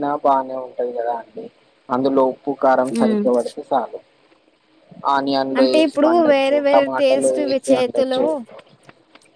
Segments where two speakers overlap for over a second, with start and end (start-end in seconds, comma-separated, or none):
5.6-8.2